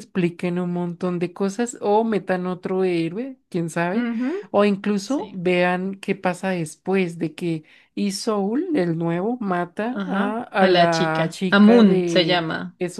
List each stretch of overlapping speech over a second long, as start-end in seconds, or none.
9.9-12.4